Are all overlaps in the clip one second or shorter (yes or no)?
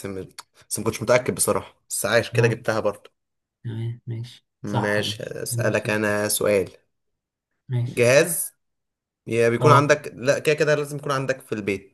no